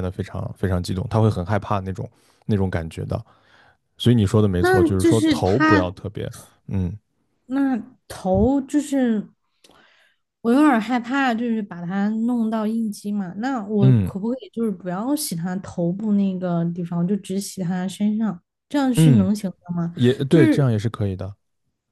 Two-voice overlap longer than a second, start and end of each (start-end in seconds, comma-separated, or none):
4.6-5.9